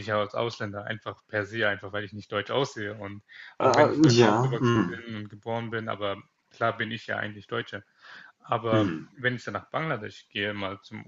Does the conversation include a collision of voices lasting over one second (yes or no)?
yes